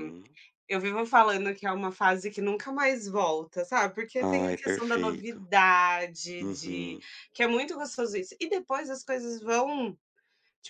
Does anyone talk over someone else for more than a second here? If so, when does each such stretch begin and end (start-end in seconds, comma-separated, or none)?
4.2-5.4